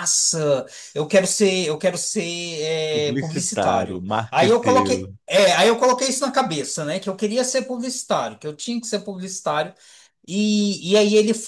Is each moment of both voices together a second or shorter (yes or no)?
no